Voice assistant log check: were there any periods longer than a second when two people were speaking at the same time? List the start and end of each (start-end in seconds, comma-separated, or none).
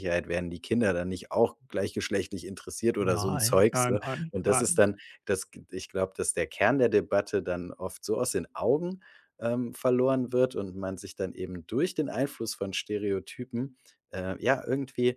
3.0-4.8